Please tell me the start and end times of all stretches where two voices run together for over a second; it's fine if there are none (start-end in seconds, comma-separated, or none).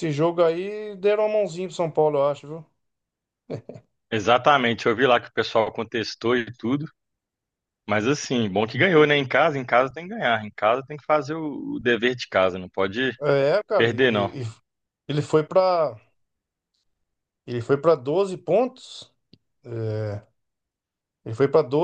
none